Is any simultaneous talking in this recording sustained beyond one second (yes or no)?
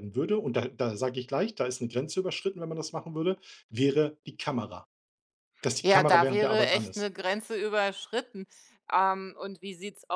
yes